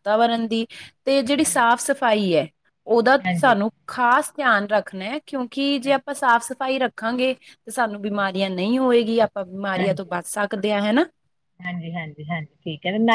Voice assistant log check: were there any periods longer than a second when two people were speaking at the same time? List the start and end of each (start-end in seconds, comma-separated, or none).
none